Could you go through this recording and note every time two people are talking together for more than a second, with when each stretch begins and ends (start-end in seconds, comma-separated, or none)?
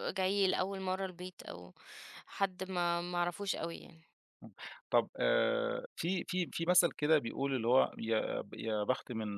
none